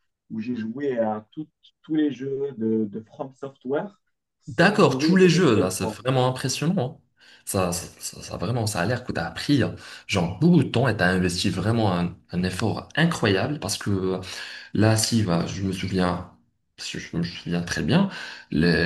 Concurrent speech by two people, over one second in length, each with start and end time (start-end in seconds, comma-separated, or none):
4.5-6.0